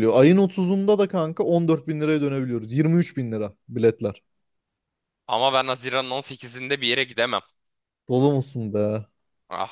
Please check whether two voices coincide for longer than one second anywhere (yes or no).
no